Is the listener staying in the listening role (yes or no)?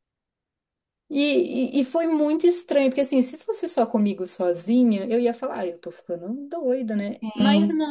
yes